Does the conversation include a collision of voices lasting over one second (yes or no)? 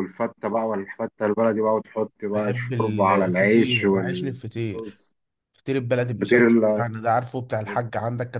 yes